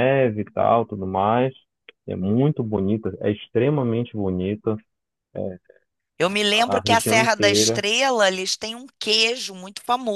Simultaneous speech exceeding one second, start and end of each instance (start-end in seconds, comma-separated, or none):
6.5-7.8